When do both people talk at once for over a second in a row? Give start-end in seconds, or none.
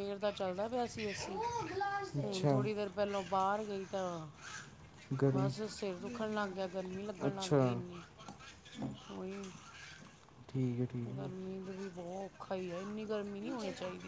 none